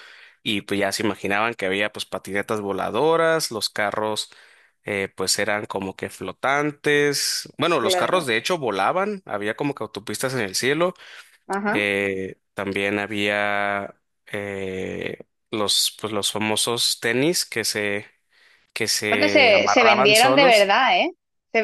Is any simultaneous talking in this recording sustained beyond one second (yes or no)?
yes